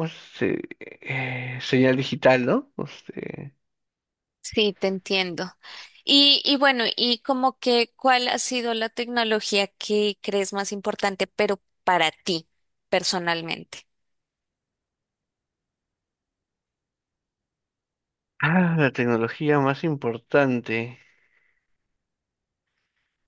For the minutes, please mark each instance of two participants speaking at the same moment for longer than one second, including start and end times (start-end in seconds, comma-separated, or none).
none